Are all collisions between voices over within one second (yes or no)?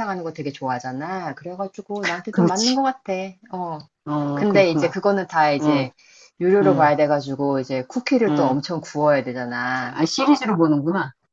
yes